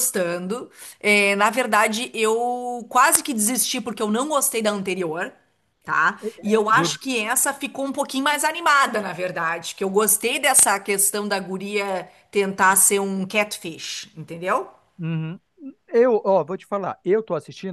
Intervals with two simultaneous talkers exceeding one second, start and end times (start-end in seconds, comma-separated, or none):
none